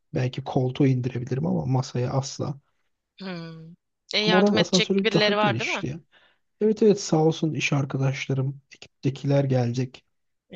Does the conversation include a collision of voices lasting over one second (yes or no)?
yes